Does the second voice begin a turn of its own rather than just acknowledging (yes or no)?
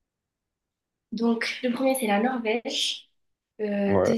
no